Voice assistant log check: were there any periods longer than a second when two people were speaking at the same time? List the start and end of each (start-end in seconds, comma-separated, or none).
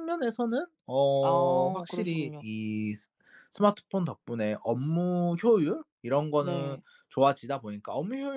1.2-2.4